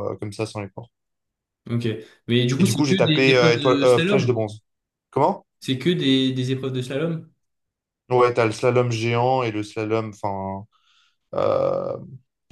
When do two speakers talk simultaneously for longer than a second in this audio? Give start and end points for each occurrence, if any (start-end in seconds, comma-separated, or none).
2.6-4.4